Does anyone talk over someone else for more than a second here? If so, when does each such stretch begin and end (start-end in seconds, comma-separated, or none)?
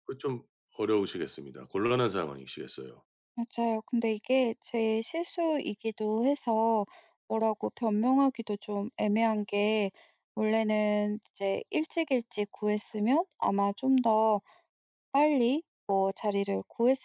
none